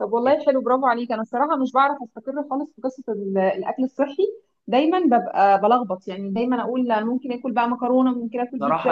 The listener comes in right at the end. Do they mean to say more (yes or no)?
yes